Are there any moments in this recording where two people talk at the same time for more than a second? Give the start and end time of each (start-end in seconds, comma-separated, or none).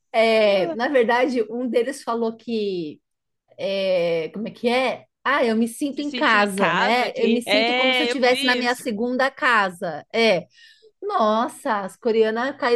5.9-8.8